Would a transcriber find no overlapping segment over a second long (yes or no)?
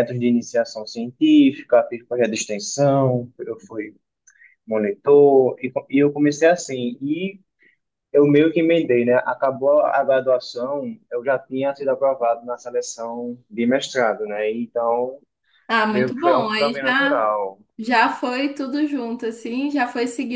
no